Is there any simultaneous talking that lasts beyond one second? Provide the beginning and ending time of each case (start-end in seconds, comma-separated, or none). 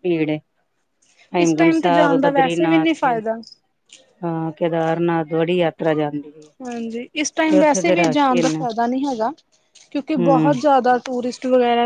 1.4-2.9